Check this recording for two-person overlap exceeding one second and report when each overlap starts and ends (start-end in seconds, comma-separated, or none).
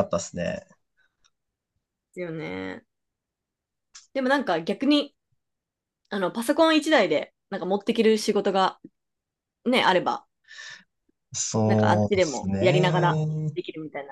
11.7-13.3